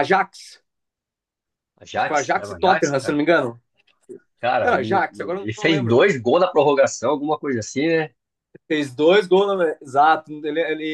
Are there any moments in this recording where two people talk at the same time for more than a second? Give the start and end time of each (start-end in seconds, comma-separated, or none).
1.9-3.2, 4.6-6.0